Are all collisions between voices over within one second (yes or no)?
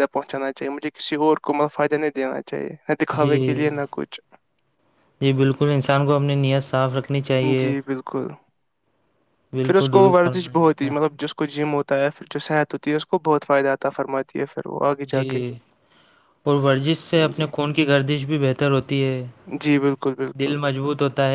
no